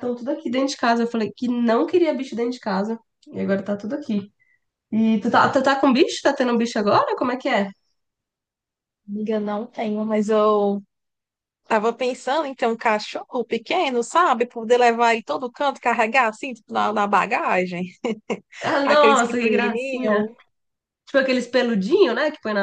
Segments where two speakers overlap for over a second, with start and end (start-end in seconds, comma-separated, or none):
18.8-20.3